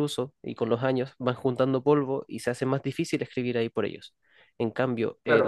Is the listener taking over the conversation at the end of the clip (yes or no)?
yes